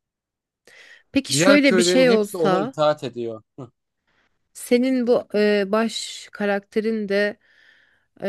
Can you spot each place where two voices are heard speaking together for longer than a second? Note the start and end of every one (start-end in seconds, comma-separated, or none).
1.3-2.7